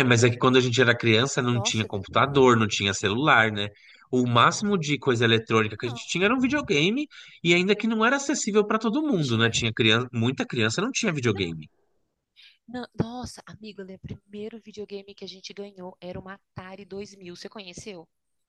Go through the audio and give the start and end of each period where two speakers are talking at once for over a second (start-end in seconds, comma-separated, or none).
none